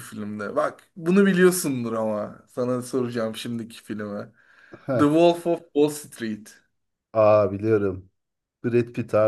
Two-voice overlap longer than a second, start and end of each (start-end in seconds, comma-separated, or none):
none